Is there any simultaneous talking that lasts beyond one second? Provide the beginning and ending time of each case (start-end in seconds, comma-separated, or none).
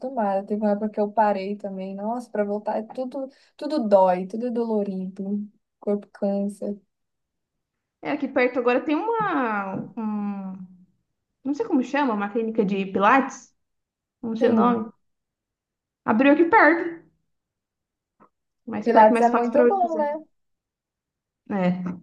18.8-20.1